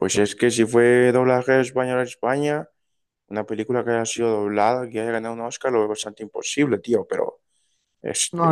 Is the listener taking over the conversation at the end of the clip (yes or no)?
yes